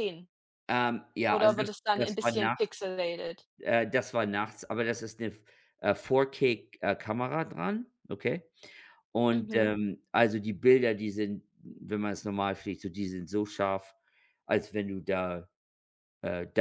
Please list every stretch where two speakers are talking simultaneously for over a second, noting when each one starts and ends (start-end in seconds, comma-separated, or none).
1.3-2.8